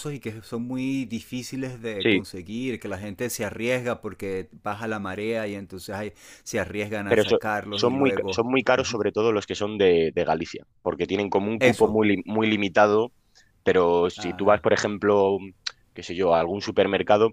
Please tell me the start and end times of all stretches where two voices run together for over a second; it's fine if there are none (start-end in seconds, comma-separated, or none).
7.1-9.0